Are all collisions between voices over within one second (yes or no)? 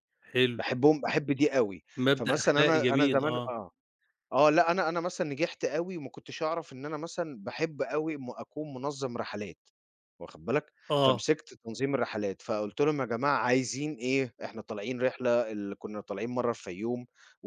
no